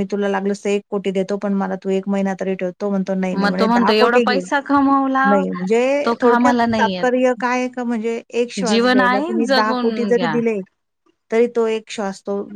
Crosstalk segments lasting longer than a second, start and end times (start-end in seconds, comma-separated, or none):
8.7-10.4